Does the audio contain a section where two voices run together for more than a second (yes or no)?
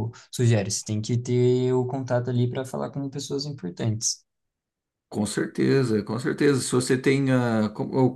no